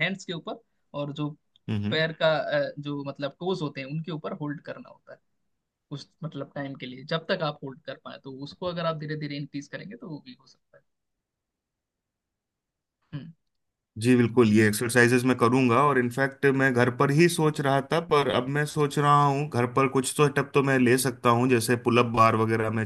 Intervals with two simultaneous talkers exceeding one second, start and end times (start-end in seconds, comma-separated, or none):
none